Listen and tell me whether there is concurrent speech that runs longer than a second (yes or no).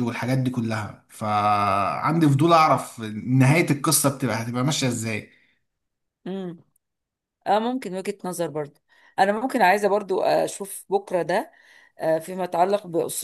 no